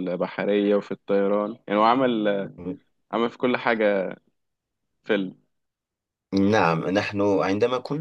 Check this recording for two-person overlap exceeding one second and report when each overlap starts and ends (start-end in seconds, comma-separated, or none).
none